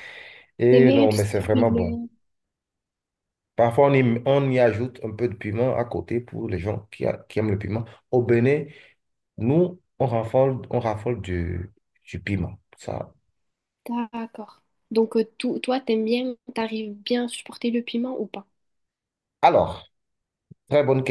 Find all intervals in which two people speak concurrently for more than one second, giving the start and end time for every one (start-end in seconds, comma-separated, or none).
0.7-2.0